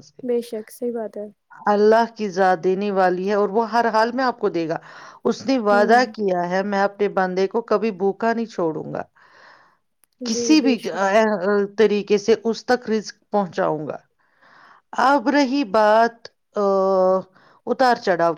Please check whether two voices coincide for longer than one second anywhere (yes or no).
no